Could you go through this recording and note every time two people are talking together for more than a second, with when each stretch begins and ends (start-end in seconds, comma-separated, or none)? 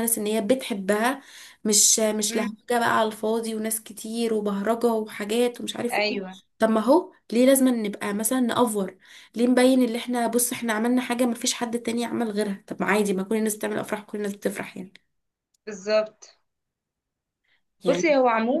none